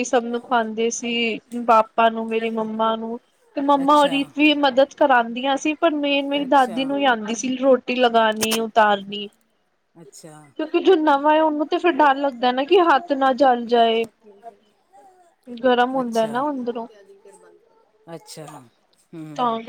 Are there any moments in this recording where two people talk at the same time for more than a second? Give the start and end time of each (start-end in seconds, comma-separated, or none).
none